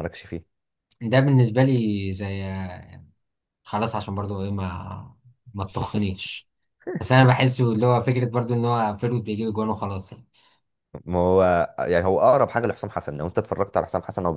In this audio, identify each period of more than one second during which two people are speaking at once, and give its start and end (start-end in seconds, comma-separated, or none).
none